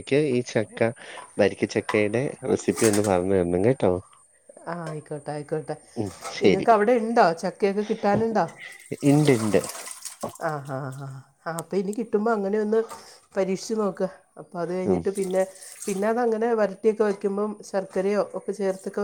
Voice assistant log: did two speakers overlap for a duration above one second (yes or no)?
no